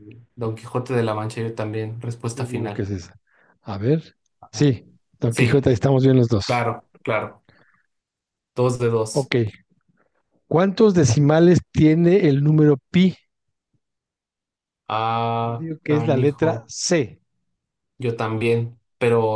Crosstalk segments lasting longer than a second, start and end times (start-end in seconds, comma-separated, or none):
15.4-16.7